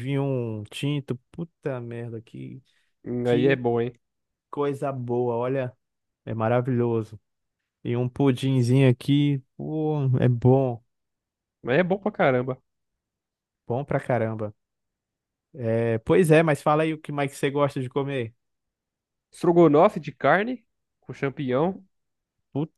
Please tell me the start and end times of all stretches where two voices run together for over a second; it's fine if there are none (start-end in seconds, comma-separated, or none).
none